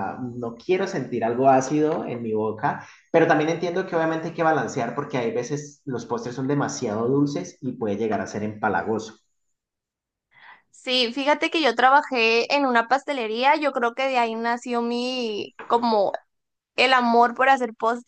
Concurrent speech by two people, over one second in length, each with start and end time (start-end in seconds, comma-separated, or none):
none